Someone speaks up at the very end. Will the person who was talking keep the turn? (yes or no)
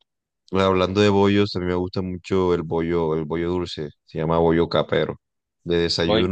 yes